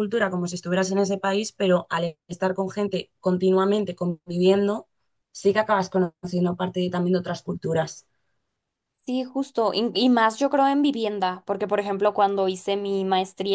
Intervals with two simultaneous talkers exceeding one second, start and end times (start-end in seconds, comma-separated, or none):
none